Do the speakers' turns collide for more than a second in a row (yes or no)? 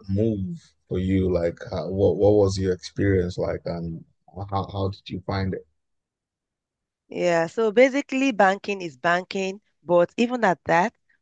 no